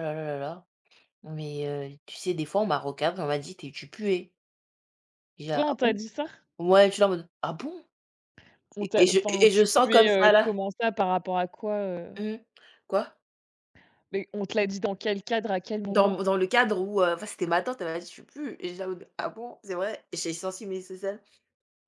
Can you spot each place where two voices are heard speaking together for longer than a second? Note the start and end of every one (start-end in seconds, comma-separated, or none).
8.8-10.5